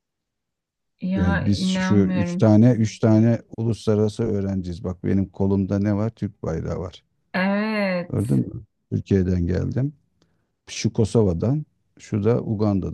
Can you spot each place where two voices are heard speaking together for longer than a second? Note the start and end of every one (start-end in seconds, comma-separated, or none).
1.1-2.5